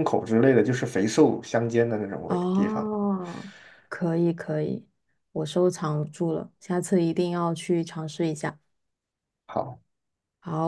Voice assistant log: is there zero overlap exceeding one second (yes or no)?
yes